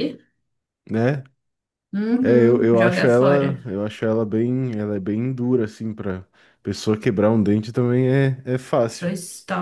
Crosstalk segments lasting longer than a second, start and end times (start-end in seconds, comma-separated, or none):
2.2-3.5